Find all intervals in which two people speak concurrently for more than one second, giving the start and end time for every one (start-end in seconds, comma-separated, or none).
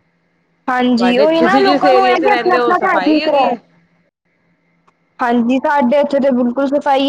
1.0-3.5